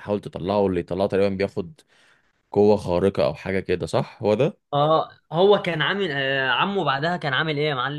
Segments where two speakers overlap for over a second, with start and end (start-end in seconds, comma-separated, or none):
none